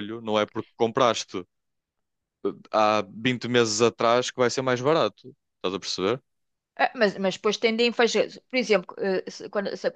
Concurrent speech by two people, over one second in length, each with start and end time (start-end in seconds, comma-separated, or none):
none